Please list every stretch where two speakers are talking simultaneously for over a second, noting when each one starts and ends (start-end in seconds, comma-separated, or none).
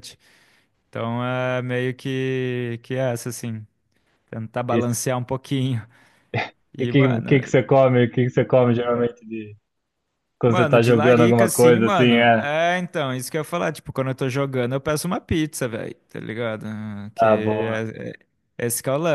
10.4-12.5